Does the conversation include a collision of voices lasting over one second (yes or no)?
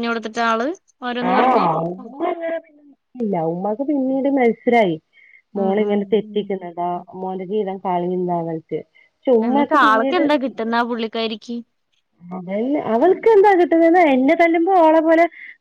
no